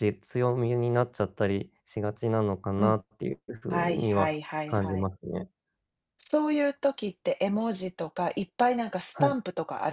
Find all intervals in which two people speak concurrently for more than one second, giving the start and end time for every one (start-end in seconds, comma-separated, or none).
3.7-5.1